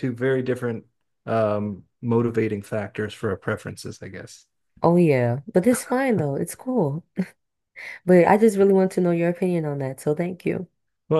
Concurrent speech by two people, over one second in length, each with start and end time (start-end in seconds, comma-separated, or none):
none